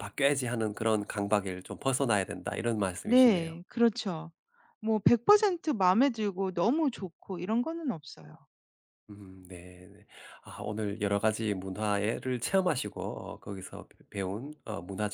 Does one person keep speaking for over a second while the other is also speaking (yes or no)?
no